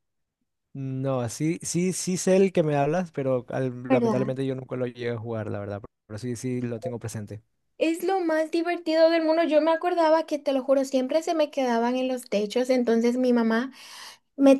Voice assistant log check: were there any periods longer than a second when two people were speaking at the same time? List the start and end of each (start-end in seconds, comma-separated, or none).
none